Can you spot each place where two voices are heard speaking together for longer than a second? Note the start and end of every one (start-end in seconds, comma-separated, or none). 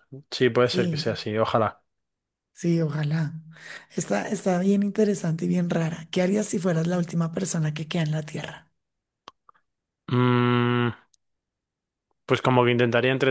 none